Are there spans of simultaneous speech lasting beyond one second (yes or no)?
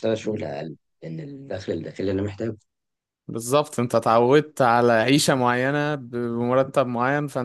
no